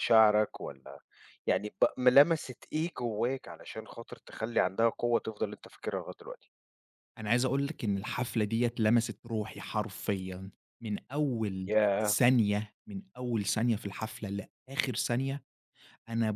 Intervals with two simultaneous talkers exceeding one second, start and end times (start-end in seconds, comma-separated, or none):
none